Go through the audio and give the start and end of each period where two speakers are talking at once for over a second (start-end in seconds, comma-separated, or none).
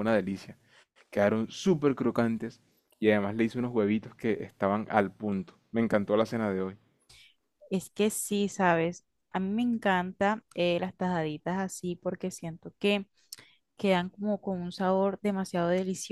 none